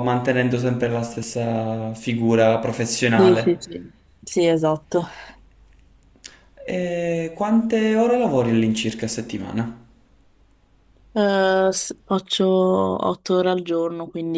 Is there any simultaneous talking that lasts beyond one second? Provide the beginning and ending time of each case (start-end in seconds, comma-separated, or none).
none